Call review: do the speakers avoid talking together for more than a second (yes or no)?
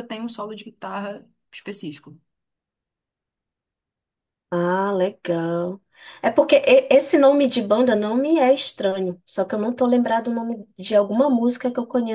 yes